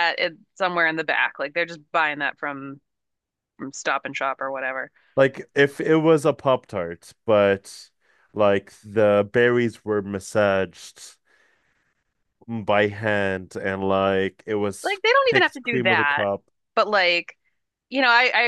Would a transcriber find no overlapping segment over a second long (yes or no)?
no